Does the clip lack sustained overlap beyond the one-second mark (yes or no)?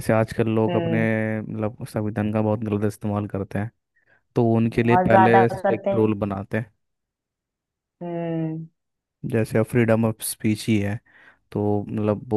no